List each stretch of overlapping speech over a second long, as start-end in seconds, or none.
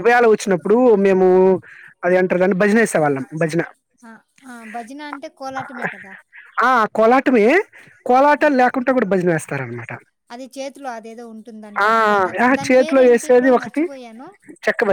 11.9-13.8